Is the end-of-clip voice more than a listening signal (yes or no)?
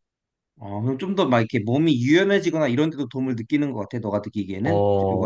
yes